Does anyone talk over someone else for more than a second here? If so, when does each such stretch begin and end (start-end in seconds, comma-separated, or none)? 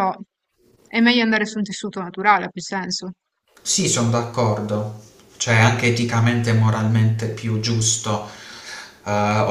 none